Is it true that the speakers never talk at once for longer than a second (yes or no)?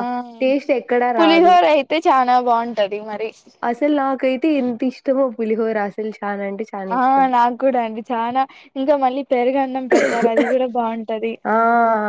yes